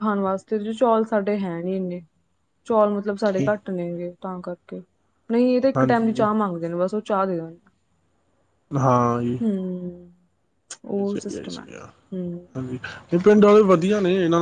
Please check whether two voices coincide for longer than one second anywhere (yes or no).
no